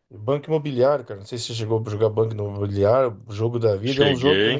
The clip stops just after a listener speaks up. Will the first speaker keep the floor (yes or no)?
yes